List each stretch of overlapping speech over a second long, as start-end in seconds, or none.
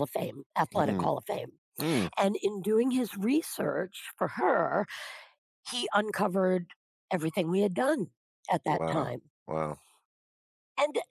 none